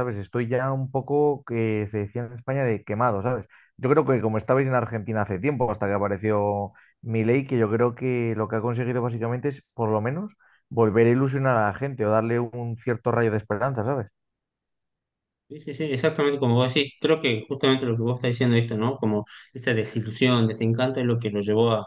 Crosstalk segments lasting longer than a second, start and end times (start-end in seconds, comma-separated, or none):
none